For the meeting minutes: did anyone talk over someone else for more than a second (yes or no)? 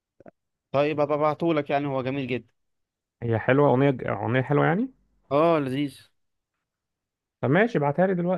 no